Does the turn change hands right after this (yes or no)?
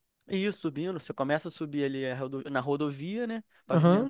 no